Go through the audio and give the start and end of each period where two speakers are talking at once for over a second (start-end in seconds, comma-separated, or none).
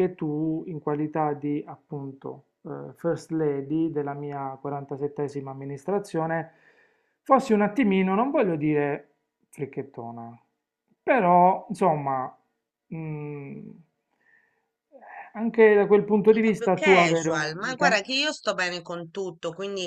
16.3-18.1